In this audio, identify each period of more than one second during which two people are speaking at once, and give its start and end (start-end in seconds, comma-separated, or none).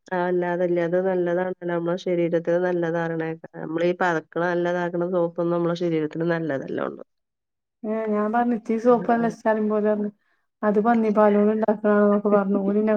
none